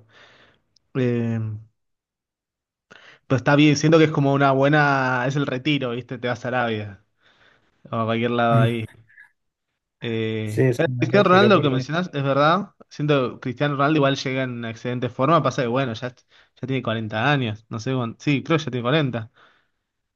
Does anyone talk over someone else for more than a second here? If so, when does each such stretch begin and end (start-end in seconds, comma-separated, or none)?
10.4-11.9